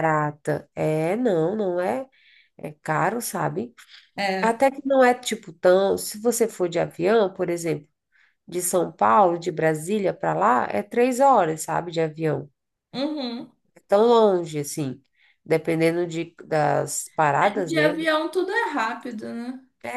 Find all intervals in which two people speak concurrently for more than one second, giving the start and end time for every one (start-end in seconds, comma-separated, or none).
none